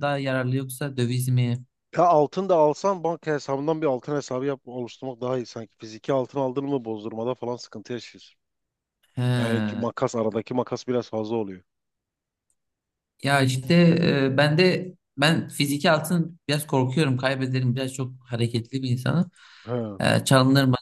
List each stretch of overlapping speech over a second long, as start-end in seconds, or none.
none